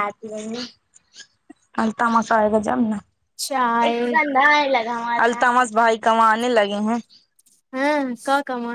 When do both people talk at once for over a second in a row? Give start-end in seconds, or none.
none